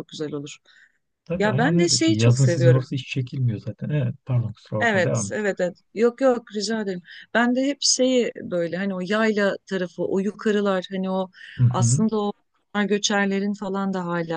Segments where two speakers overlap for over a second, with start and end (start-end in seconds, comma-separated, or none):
1.4-2.9